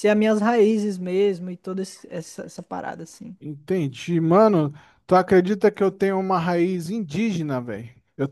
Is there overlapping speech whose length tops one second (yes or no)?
no